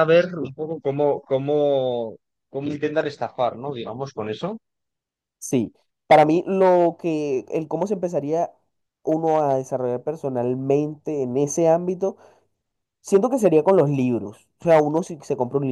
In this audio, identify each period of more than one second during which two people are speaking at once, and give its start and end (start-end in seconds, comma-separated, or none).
none